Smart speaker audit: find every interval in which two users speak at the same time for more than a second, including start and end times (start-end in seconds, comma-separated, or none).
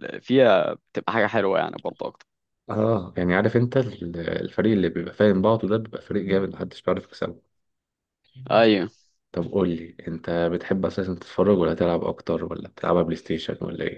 none